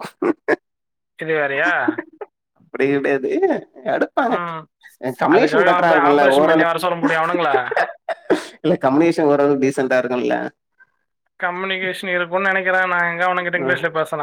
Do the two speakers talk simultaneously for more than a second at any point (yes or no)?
yes